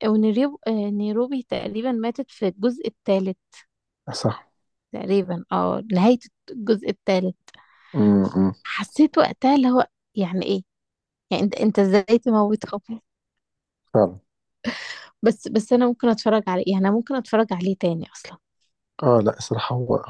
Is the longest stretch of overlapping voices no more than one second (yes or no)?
yes